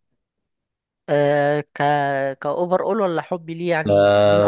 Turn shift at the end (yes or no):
yes